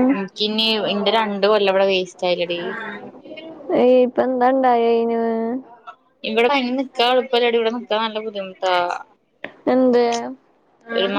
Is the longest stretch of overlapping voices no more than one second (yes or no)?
yes